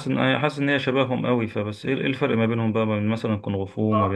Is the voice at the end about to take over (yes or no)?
yes